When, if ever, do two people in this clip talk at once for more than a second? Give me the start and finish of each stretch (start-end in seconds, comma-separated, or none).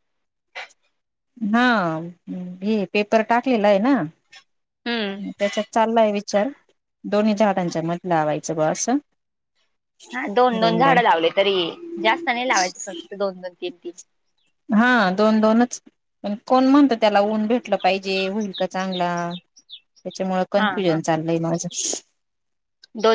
none